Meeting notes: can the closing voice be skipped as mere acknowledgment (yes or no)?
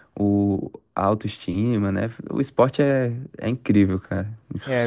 no